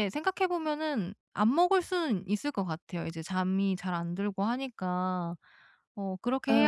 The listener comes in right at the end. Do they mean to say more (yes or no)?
no